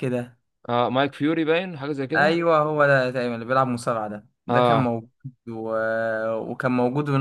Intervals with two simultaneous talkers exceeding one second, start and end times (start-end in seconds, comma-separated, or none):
none